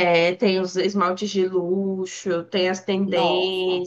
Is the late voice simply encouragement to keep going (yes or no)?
yes